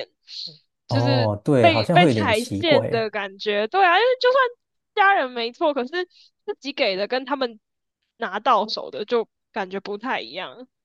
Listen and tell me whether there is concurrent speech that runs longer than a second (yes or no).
yes